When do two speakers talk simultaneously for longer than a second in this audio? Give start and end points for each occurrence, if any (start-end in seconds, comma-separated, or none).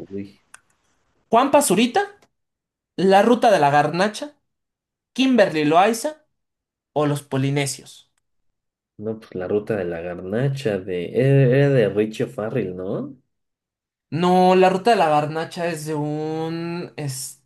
none